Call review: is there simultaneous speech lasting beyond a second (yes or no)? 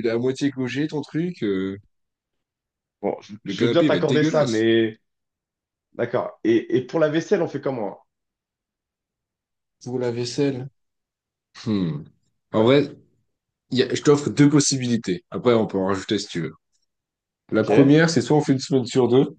yes